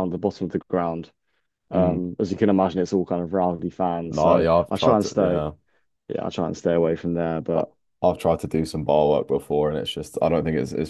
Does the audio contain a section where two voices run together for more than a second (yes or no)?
yes